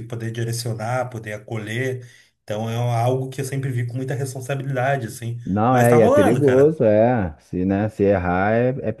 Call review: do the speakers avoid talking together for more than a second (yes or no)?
no